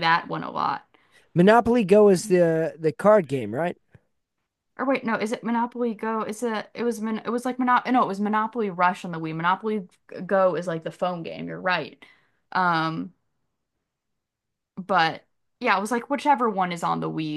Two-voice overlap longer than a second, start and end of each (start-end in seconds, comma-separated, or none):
none